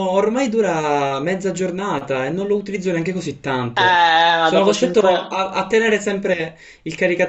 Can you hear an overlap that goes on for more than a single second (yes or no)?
yes